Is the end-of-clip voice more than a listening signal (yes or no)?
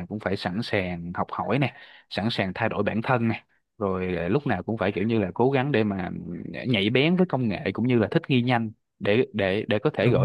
no